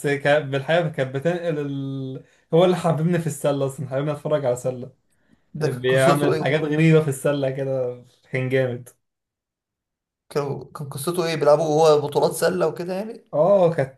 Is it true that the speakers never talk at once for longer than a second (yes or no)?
no